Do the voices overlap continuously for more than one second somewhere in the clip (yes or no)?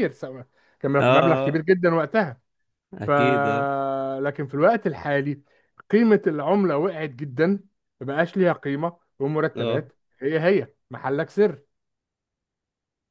no